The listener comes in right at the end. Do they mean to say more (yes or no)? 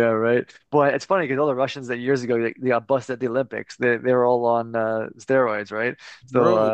no